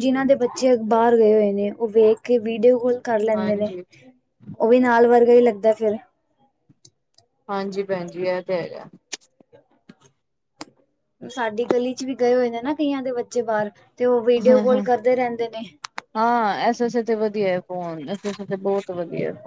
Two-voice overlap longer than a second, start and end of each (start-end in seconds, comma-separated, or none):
none